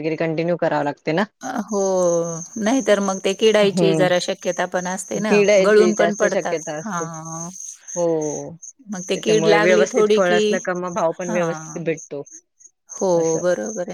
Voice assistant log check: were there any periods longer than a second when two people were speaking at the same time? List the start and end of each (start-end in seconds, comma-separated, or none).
5.3-7.0